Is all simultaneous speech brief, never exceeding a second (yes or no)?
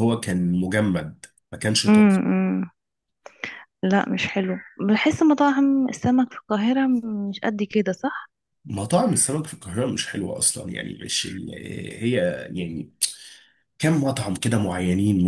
yes